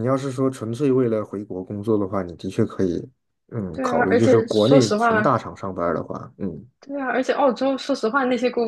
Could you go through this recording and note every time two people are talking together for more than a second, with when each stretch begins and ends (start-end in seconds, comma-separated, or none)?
3.7-5.4